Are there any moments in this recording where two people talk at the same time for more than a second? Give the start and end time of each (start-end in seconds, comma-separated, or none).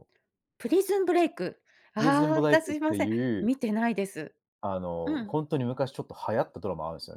1.9-3.5